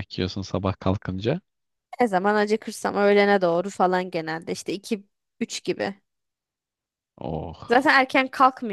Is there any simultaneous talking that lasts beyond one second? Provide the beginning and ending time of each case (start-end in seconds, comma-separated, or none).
none